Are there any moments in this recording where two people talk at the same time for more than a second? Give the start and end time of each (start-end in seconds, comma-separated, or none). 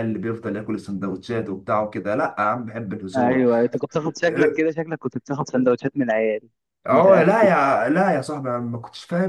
none